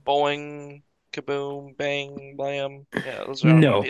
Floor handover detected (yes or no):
yes